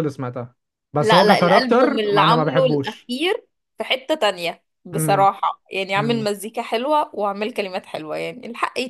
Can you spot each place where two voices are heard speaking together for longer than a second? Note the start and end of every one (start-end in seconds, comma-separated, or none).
1.0-3.1